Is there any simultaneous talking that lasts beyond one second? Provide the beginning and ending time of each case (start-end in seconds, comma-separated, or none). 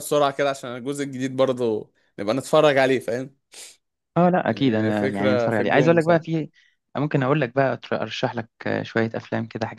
4.5-6.2